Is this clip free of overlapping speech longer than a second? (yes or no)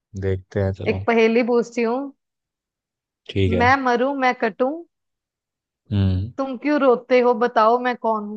yes